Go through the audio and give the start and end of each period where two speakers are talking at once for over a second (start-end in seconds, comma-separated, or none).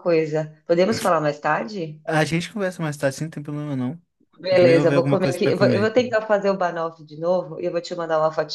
4.5-6.1